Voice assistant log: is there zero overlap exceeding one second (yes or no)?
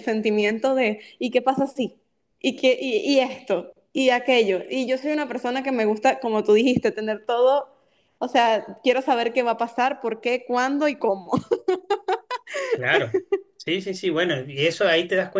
yes